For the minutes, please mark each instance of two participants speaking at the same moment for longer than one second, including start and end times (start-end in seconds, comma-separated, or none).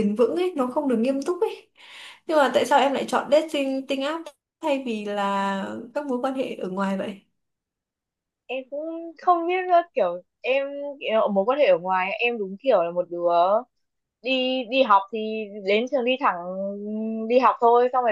none